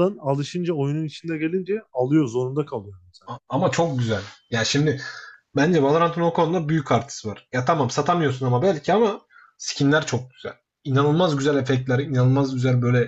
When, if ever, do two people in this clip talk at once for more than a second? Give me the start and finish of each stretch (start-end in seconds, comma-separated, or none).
none